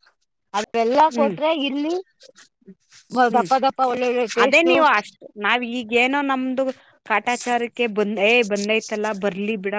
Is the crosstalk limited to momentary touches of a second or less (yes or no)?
yes